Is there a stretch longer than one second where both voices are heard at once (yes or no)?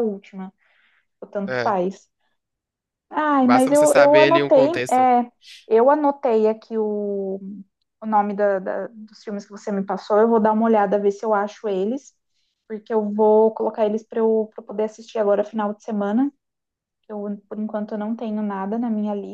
yes